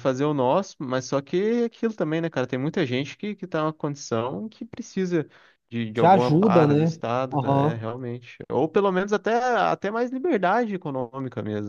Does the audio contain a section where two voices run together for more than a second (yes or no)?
yes